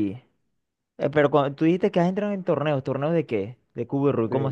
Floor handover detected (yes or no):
yes